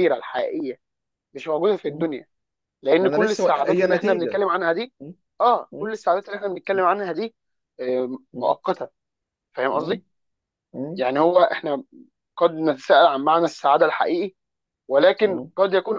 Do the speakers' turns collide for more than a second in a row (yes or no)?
yes